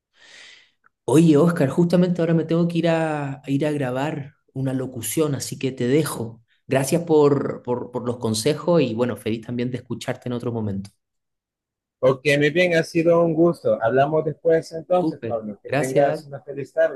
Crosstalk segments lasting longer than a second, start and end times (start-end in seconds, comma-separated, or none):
14.9-16.2